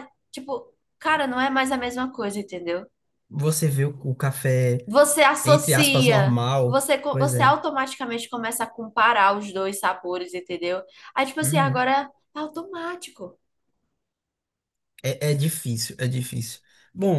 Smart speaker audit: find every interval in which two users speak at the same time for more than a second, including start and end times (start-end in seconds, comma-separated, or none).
5.4-7.6